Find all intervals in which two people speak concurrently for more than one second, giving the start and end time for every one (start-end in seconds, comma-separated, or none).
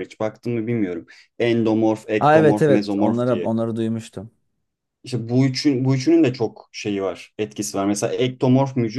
2.2-3.5